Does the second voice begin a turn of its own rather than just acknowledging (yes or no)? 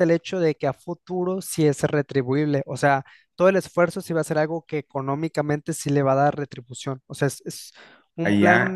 yes